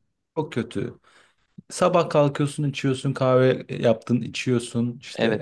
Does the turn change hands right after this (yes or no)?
yes